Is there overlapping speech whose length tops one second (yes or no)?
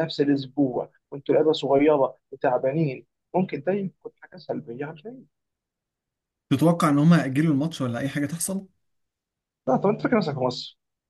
no